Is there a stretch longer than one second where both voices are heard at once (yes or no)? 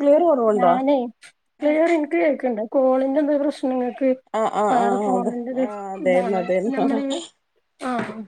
yes